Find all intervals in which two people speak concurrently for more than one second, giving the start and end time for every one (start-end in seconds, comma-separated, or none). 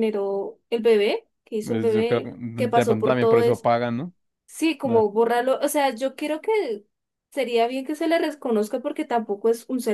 1.6-3.4